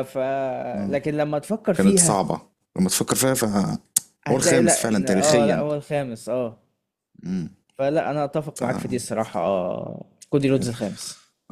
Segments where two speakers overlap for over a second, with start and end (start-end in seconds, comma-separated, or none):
4.4-5.7